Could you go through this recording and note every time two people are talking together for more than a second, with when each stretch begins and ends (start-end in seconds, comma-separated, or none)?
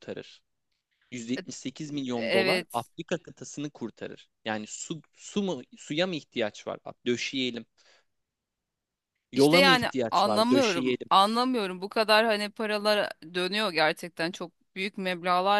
9.3-11.1